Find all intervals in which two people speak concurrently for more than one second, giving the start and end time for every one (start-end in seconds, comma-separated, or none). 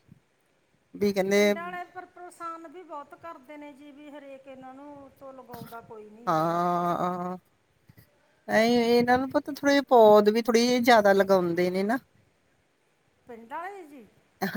none